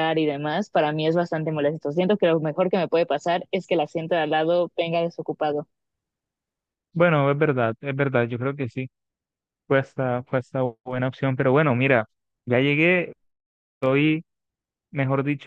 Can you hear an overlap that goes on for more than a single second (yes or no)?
no